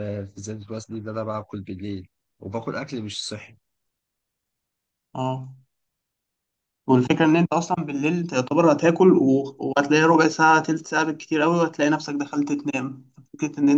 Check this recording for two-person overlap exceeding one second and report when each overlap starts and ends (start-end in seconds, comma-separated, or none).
none